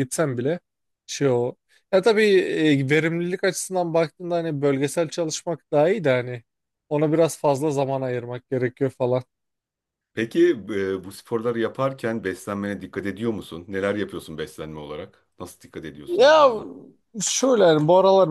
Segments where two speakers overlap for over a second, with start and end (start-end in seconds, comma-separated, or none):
none